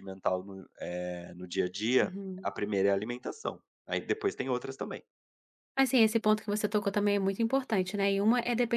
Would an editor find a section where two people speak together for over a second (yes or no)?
no